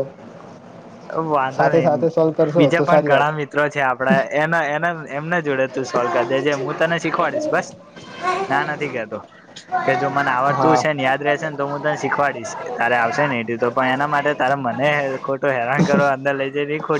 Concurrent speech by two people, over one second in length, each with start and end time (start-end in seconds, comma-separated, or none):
1.6-3.3